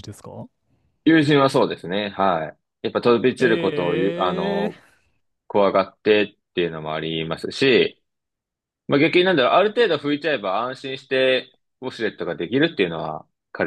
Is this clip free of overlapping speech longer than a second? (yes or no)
no